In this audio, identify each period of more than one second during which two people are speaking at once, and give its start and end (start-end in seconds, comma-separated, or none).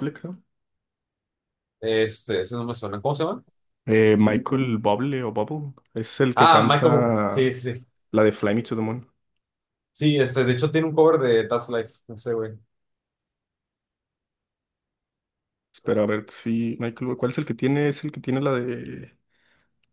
6.3-7.5